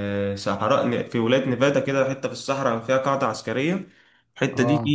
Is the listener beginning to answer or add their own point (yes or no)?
no